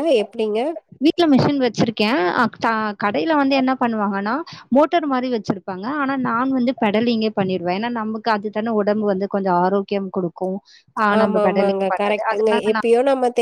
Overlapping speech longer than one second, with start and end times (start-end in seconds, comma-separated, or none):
11.2-12.9